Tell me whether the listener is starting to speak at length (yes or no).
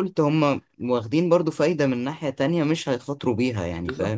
yes